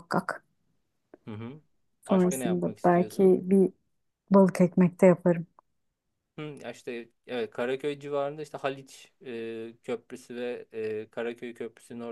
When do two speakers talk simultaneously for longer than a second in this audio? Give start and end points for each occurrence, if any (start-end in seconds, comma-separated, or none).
2.1-3.4